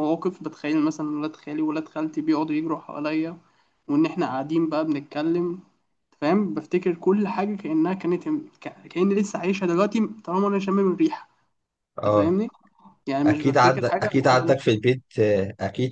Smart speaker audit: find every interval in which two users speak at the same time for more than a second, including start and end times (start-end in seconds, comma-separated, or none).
13.2-14.8